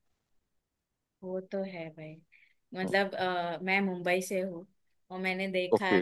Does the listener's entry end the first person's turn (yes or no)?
no